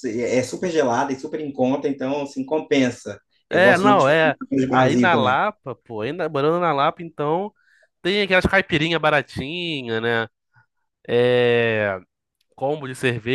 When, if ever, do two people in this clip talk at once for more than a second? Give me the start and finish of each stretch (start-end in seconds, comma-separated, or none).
3.5-5.4